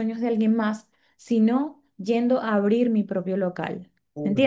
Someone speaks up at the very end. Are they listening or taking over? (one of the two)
listening